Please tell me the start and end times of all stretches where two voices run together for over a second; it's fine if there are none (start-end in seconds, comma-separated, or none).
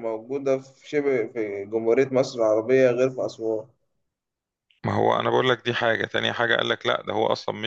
none